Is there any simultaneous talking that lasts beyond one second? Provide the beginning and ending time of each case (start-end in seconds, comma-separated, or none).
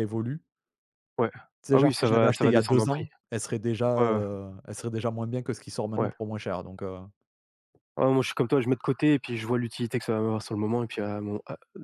1.7-3.1